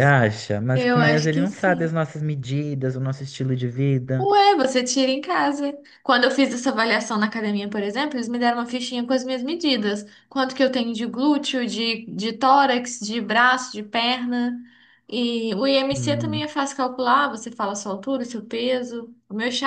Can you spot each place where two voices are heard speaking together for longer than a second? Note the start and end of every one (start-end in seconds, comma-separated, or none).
0.7-2.0